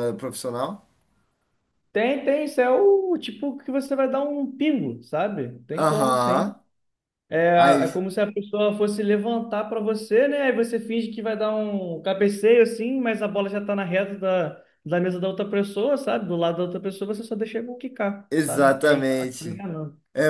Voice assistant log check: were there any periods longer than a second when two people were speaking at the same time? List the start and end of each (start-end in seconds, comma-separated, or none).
18.3-19.6